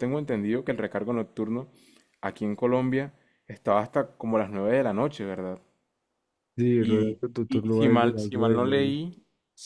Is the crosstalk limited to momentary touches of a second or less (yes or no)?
no